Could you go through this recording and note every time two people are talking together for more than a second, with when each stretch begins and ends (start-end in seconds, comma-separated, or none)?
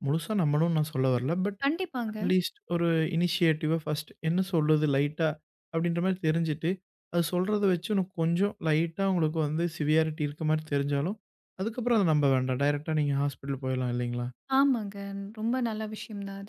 none